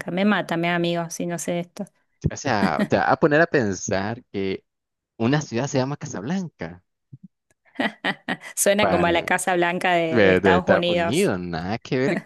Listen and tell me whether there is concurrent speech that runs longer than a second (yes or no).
yes